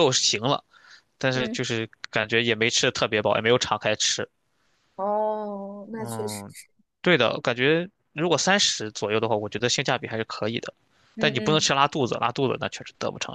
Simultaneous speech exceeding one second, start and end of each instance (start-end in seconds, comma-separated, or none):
none